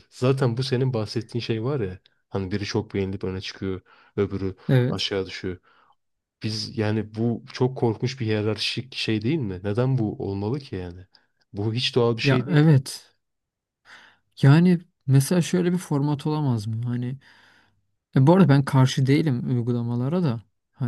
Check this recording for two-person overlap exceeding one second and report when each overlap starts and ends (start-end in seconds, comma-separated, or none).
none